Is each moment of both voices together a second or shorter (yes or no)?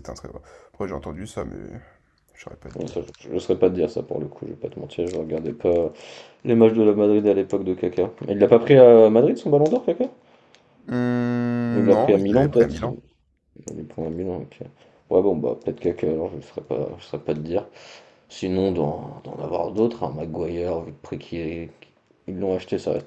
no